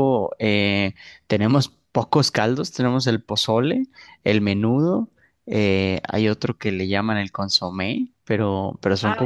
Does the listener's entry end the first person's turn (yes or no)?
yes